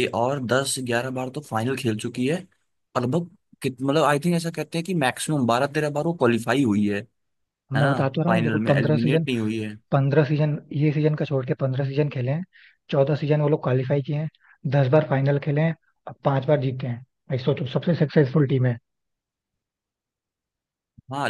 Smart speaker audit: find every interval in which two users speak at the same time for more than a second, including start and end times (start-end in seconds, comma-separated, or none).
7.7-9.2